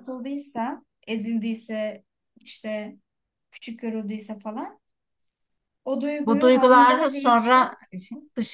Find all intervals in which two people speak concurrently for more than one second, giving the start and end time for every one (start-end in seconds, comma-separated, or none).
6.2-7.8